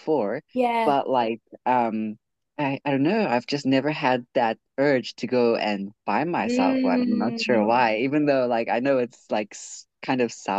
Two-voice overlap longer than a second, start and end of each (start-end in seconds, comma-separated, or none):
6.4-7.9